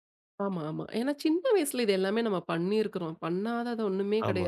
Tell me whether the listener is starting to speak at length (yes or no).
no